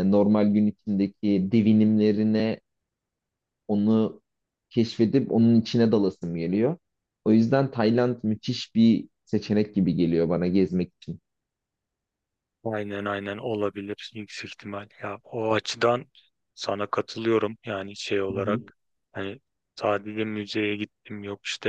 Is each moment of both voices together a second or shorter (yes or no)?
yes